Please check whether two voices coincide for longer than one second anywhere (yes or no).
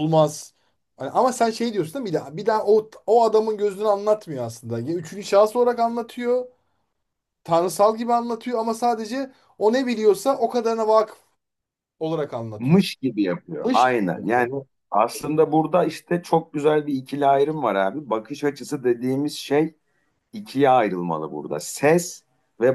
no